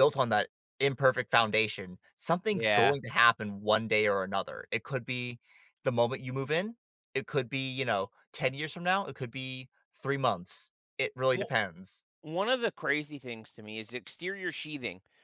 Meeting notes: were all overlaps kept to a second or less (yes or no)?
yes